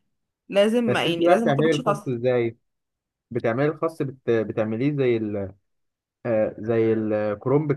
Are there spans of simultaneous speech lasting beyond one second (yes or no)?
yes